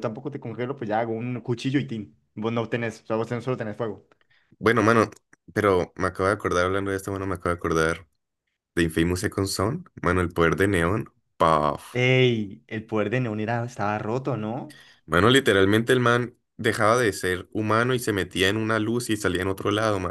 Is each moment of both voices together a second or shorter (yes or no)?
yes